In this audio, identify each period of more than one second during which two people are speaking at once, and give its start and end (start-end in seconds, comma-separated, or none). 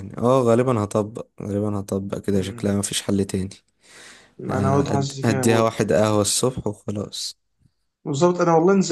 4.5-5.8